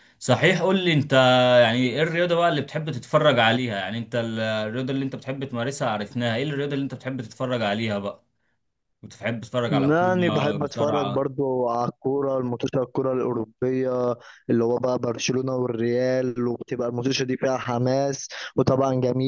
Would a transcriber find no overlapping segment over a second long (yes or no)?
no